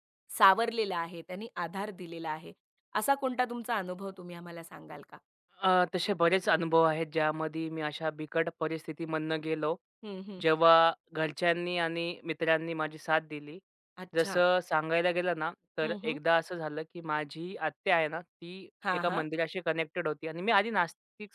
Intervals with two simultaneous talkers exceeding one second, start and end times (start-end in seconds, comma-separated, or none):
none